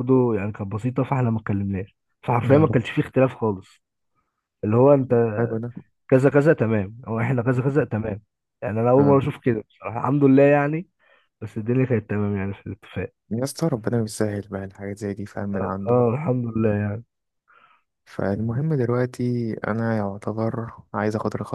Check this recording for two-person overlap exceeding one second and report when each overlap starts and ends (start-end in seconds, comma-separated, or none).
none